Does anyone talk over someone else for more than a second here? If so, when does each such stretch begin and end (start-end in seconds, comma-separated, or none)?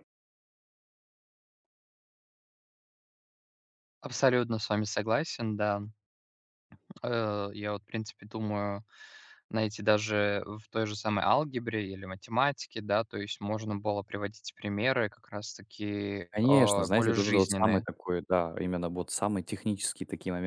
16.3-17.9